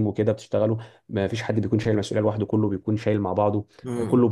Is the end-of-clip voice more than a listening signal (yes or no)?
no